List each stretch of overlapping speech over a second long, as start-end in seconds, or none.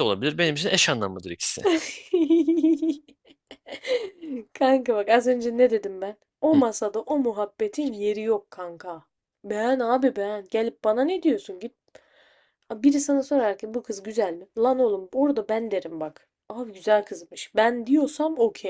none